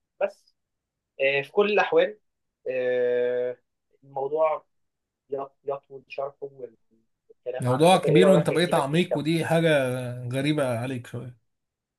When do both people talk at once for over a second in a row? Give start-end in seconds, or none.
7.6-9.3